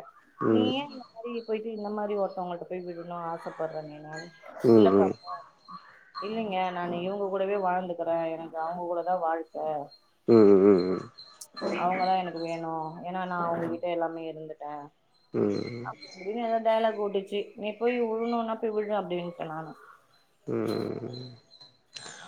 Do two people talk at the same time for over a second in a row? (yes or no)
no